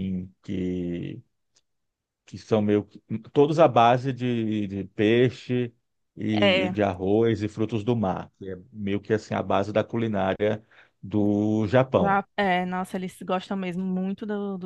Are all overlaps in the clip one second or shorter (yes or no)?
yes